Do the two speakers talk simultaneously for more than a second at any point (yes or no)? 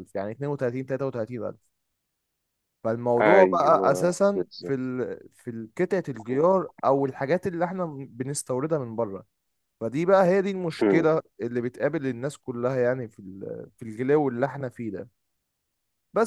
yes